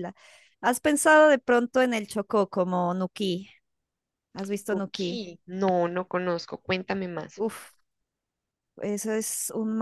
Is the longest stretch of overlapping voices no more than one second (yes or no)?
yes